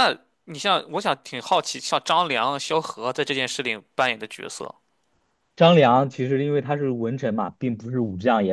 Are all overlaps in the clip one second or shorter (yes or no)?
yes